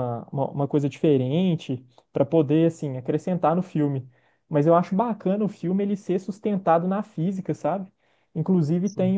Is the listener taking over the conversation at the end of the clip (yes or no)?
no